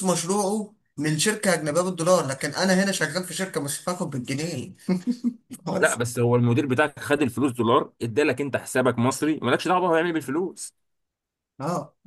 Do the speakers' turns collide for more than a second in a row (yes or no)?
no